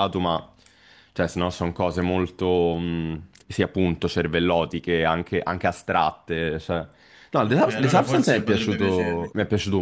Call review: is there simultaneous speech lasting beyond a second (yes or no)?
yes